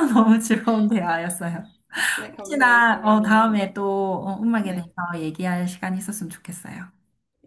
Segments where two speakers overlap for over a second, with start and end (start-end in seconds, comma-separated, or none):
2.3-3.6